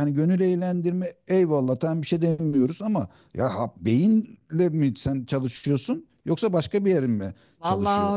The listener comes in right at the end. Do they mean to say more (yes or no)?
yes